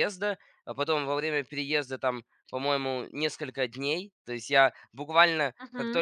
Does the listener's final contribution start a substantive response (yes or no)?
no